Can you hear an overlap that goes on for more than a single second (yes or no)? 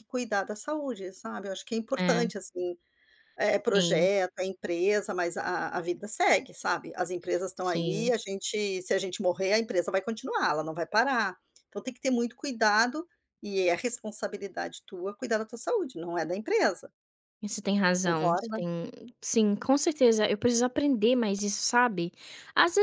no